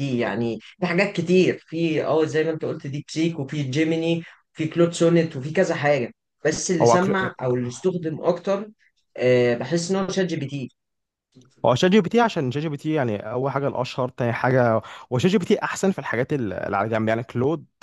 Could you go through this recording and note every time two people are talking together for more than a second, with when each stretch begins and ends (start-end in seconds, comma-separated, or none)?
none